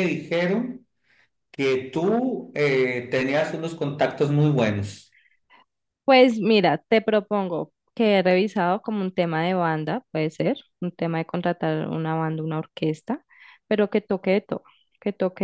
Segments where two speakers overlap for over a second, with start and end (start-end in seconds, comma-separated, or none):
none